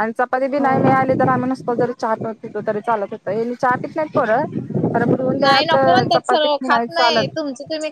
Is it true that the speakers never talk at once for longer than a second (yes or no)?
no